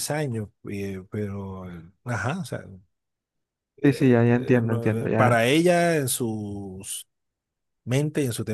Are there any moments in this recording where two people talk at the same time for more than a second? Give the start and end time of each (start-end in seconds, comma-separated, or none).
3.8-5.4